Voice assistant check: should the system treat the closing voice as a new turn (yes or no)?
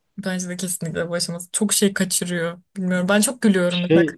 no